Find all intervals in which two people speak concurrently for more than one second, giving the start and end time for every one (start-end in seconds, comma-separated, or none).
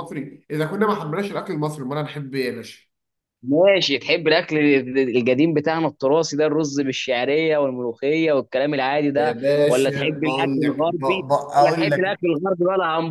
9.2-12.2